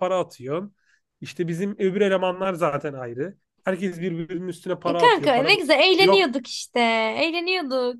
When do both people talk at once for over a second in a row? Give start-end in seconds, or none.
4.8-6.2